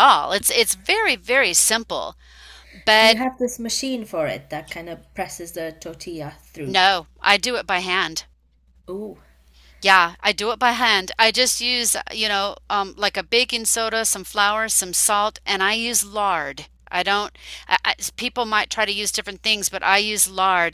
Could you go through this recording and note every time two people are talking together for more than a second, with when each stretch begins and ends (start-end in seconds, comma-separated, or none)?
none